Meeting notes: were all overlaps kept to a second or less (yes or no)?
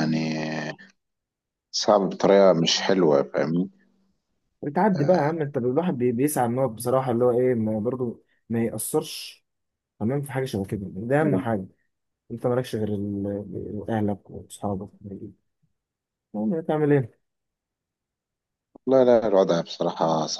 yes